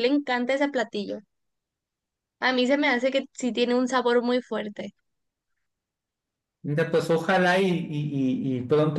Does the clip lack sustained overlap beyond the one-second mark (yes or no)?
yes